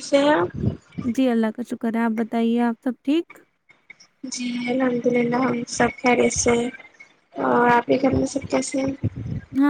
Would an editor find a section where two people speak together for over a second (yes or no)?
no